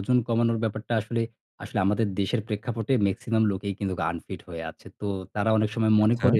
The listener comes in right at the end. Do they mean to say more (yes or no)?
no